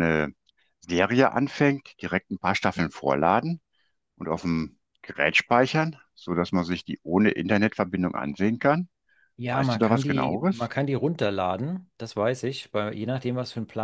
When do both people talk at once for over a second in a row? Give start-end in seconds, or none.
9.5-10.7